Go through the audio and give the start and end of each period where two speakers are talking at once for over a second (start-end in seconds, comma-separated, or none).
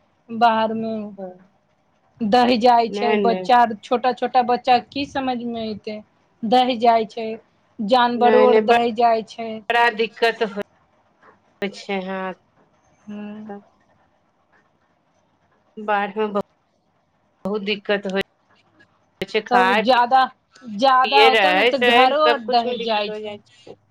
20.9-23.1